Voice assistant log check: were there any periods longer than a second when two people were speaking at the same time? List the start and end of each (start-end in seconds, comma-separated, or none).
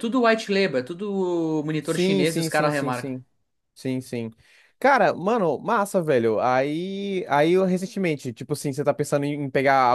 1.8-3.1